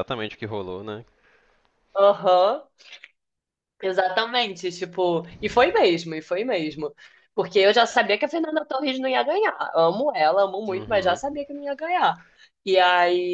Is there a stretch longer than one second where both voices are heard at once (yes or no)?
no